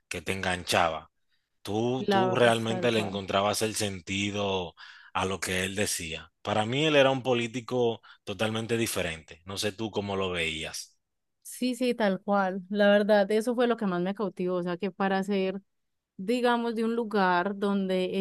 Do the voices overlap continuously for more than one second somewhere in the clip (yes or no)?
yes